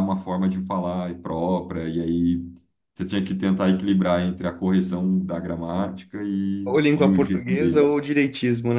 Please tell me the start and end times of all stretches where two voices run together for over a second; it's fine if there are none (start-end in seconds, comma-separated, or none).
6.7-7.9